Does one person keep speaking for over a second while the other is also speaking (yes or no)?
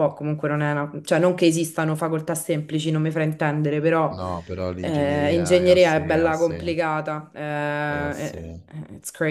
yes